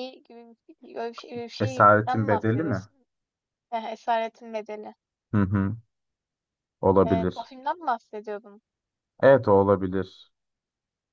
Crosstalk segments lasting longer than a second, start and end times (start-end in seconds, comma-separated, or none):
1.6-2.8